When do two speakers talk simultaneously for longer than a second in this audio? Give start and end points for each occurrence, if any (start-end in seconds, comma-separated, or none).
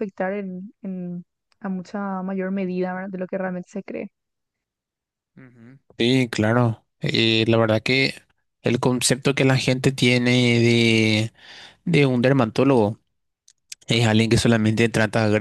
none